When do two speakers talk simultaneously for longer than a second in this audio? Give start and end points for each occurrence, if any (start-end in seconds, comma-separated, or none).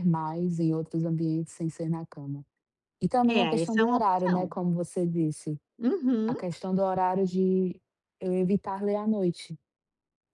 3.3-4.5